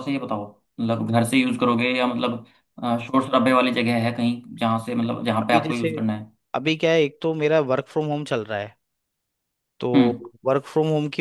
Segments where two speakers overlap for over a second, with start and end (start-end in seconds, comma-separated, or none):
none